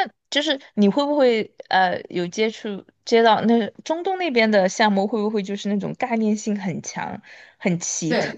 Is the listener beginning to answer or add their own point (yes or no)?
yes